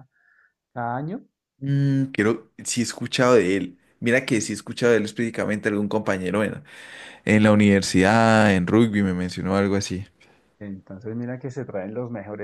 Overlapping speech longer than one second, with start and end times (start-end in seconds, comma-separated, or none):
none